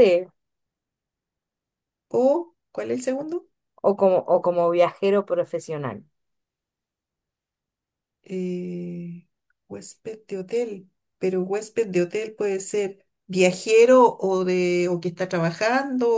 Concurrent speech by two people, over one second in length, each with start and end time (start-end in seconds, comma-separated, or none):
none